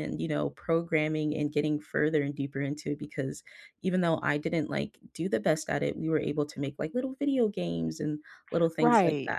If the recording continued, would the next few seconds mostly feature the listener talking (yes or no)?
yes